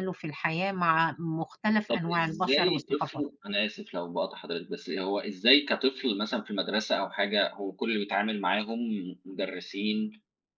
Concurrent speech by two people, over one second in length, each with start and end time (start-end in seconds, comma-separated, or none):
1.9-3.2